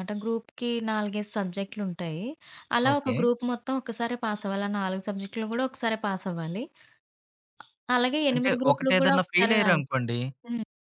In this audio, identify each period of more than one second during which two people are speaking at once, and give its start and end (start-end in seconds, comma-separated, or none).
8.3-9.9